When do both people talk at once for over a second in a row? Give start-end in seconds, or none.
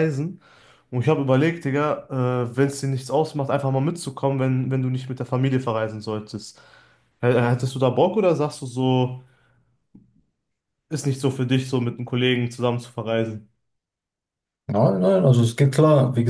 none